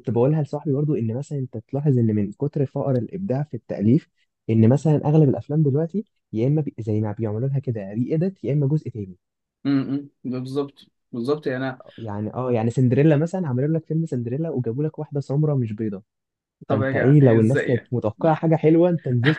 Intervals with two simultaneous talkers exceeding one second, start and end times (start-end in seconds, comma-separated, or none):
16.7-17.9